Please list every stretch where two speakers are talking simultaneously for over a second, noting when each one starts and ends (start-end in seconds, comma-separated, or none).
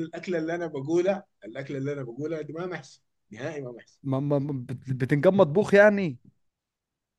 none